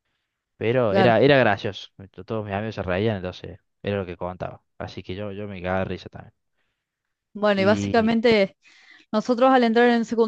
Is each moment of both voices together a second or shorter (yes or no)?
yes